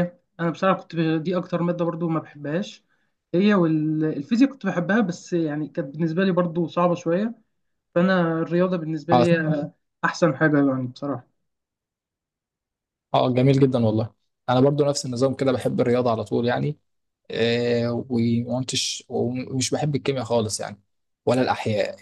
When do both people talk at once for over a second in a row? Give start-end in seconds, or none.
none